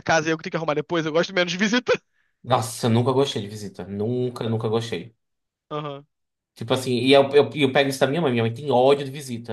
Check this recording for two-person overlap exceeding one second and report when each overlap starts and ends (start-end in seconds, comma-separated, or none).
none